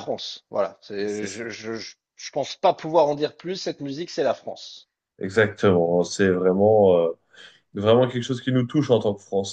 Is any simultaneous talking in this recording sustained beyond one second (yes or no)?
no